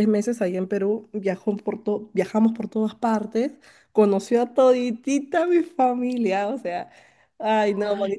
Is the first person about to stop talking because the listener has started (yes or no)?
yes